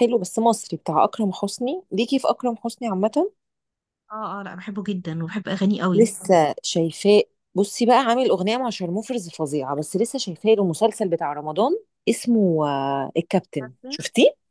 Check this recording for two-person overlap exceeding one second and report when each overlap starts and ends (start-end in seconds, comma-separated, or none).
none